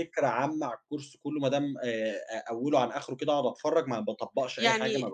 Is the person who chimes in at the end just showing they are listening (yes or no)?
no